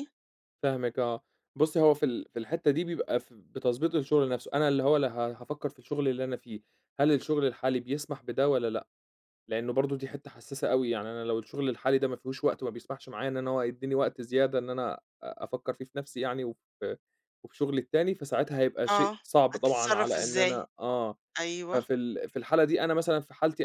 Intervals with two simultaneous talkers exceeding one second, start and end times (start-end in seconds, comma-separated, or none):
18.9-20.7